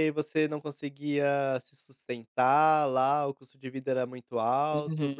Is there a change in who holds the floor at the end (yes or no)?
yes